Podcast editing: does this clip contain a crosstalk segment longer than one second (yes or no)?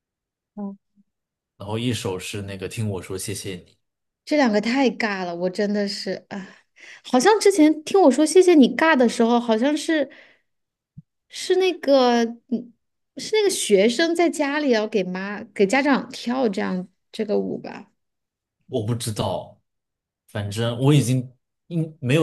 no